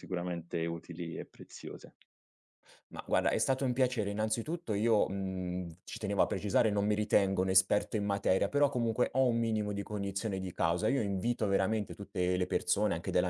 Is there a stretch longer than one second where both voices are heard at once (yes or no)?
no